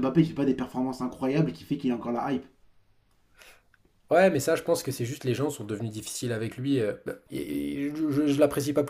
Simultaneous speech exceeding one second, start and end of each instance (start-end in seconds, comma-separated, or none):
none